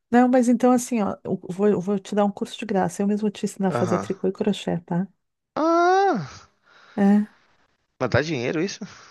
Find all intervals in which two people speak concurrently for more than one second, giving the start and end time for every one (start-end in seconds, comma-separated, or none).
none